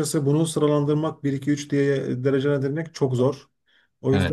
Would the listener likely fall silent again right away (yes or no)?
no